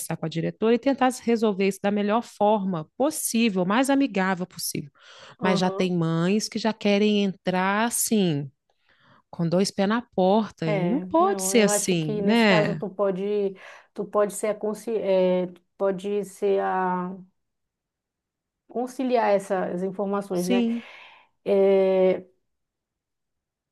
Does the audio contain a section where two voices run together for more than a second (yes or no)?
yes